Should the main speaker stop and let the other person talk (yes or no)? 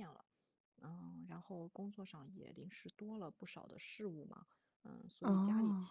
no